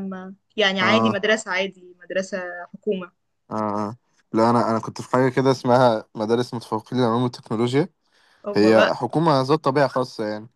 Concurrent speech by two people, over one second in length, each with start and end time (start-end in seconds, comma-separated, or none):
none